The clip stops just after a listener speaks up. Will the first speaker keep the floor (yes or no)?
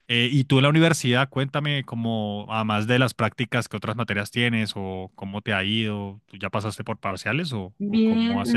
no